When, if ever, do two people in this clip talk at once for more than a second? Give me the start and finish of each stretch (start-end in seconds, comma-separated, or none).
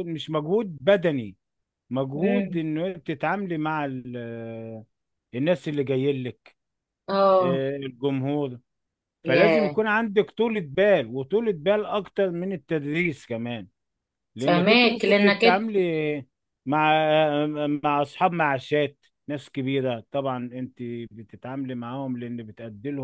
14.4-15.6